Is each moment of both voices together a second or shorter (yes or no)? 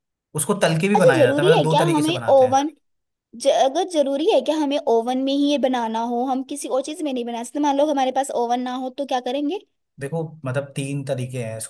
no